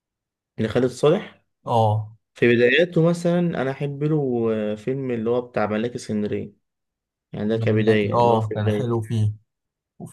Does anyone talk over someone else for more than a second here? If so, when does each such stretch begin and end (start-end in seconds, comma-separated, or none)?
7.5-9.0